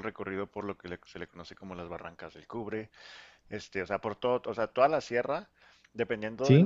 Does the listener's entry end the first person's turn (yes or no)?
no